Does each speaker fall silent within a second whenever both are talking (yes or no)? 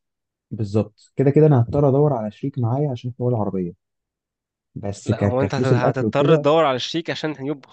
no